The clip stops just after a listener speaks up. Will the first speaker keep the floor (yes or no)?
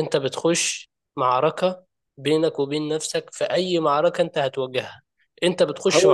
yes